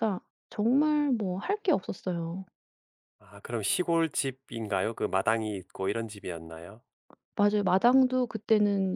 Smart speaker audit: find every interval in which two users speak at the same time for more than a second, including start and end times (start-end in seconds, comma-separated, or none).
none